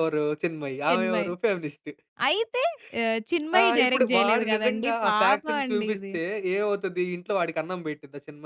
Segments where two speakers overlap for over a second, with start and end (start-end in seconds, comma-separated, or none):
3.6-6.1